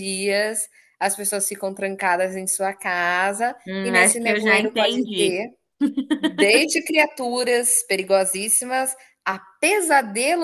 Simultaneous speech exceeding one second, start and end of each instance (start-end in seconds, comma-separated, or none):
3.7-5.4